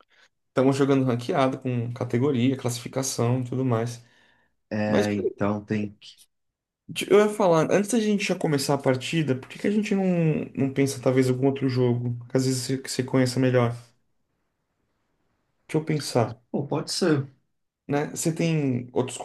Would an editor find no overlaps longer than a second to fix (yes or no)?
yes